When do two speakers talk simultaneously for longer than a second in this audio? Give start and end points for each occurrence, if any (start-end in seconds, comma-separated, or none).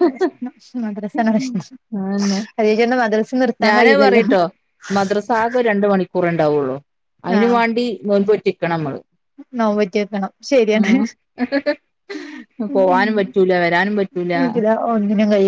none